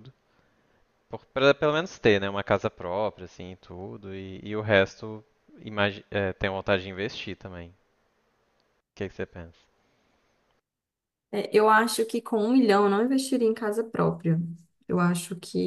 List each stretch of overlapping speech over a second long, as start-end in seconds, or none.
none